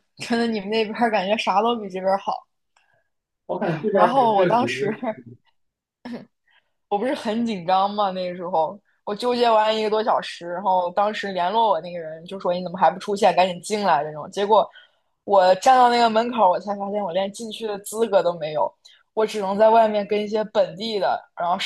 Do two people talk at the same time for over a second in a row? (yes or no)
yes